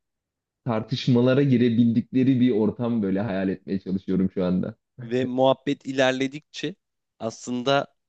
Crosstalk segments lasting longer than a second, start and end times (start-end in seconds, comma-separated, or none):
none